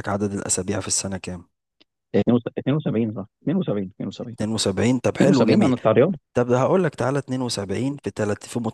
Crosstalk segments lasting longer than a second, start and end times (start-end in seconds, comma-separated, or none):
none